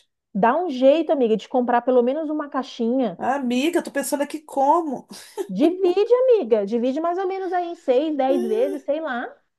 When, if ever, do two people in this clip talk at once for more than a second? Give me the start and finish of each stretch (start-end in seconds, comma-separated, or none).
none